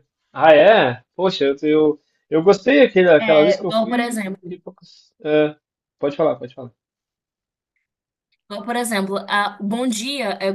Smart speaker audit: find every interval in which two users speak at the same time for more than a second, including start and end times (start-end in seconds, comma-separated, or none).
3.2-4.6